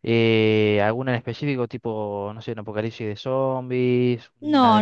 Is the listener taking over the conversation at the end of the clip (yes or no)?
yes